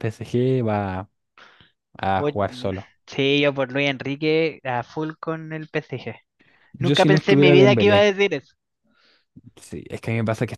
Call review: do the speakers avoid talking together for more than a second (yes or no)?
no